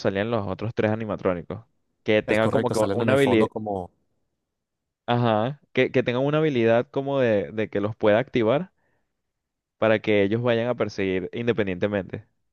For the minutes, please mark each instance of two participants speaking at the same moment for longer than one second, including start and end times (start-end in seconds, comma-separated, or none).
2.2-3.5